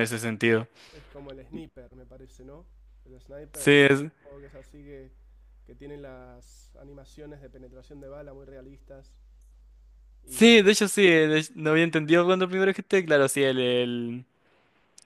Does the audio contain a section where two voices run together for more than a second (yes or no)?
no